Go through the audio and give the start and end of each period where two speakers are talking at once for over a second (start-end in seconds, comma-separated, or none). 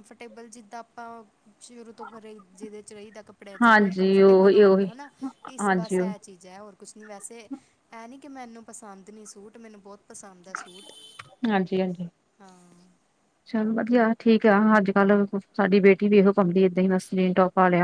3.6-4.9